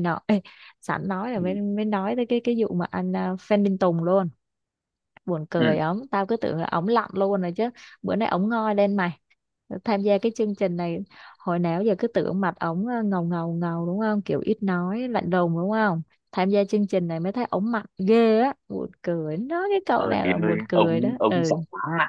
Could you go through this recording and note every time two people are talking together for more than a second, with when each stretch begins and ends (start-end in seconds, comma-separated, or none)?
19.9-21.6